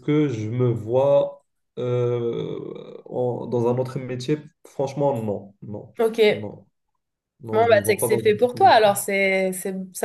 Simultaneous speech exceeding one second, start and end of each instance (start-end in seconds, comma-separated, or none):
7.5-8.8